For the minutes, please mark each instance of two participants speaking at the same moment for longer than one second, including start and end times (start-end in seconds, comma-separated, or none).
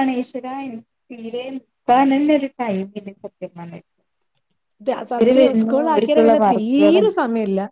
5.2-7.0